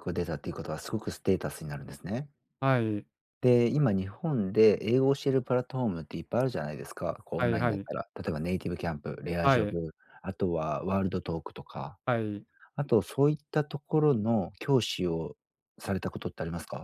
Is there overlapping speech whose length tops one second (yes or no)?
no